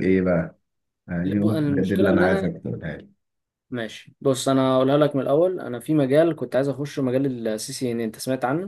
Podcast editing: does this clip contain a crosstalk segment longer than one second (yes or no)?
yes